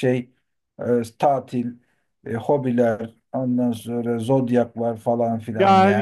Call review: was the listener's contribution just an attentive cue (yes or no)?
no